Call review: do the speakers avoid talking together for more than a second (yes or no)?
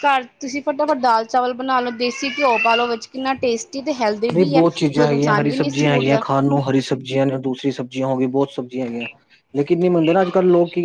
no